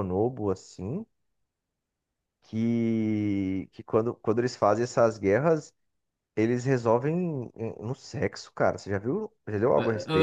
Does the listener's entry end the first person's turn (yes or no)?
yes